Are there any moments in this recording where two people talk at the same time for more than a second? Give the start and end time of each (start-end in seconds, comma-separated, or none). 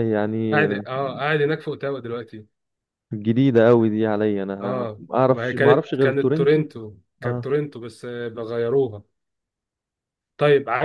4.6-6.6